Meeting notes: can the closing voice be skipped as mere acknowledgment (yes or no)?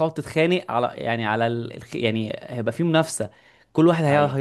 yes